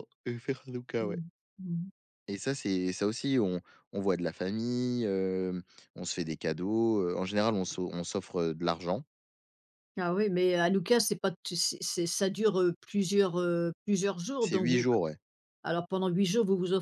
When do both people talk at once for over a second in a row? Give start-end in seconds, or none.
none